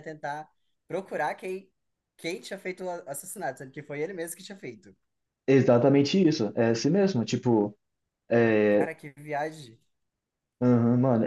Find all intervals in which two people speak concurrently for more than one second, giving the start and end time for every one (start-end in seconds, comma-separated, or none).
none